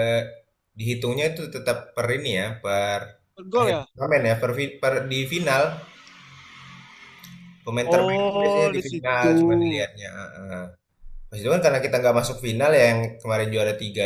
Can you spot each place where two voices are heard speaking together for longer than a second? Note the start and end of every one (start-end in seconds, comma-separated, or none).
7.8-9.9